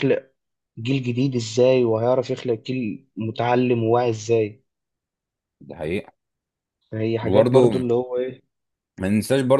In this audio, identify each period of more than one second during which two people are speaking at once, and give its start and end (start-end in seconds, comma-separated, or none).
none